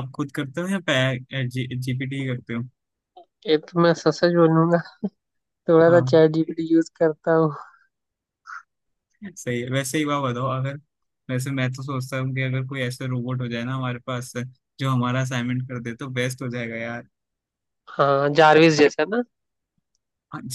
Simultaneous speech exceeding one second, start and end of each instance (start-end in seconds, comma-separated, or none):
none